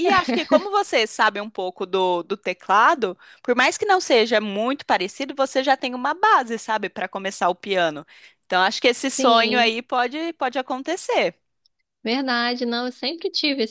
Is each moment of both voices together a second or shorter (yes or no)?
yes